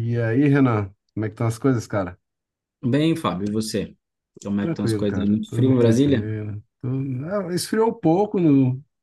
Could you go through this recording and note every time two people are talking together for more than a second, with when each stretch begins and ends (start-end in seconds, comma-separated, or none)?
4.6-6.3